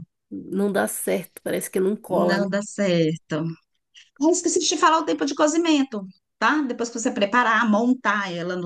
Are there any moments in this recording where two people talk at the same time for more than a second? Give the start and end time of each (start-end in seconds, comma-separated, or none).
none